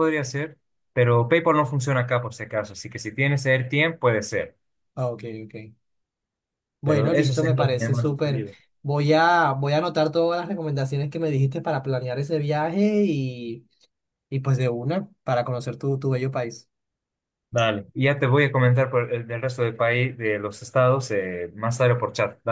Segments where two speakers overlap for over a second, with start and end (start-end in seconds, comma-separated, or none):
6.8-8.4